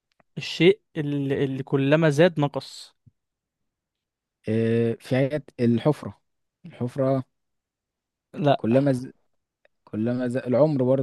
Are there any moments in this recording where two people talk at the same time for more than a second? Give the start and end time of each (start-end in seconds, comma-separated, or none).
none